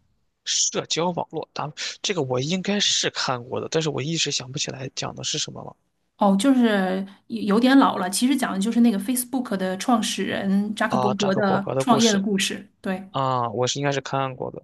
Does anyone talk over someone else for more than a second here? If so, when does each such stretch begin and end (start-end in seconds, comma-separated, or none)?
10.9-12.2